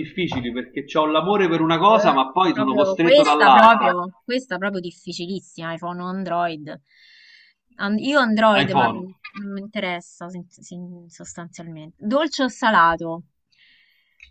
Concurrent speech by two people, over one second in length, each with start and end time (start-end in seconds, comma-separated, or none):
1.8-3.9